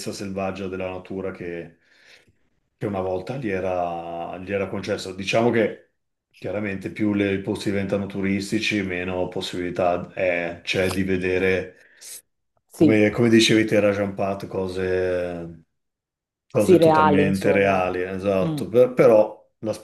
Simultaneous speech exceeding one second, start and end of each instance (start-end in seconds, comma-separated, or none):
16.6-17.8